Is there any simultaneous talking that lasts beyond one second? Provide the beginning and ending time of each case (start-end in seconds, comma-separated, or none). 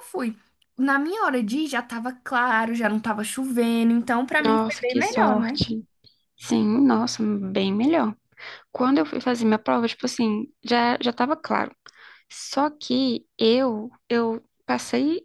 4.4-5.6